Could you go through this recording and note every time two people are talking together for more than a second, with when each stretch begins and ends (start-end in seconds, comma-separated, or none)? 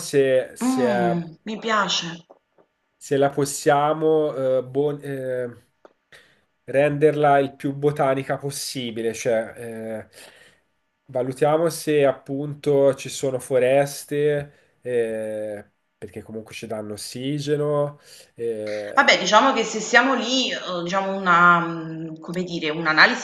none